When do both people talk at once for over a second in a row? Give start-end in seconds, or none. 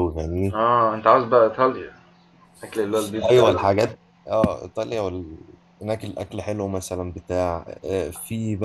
none